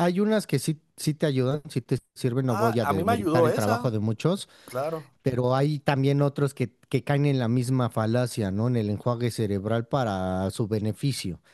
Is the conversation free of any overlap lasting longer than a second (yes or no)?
no